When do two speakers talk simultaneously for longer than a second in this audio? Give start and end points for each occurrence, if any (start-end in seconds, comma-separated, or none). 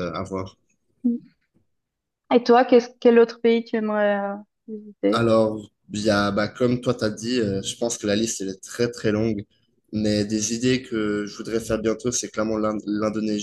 none